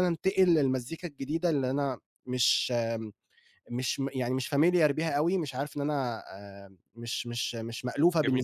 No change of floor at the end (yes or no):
yes